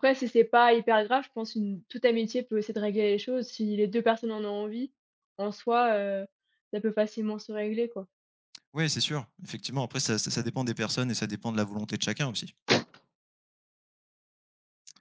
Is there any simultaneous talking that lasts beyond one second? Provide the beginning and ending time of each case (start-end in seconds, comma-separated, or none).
none